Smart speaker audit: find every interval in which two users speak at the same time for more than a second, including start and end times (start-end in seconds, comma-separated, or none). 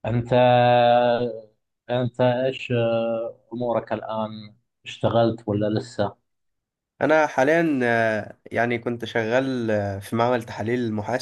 none